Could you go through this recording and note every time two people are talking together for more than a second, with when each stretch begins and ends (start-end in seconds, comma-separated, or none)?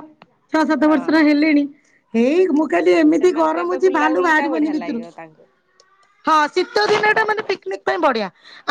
3.2-5.0